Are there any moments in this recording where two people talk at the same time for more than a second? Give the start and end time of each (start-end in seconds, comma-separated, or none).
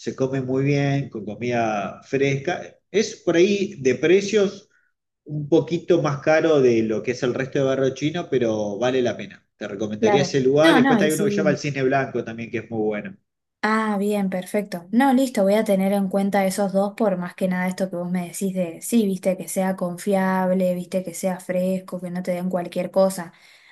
10.0-11.6